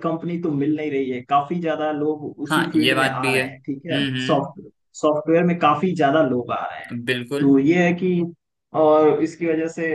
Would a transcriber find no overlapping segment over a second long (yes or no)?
no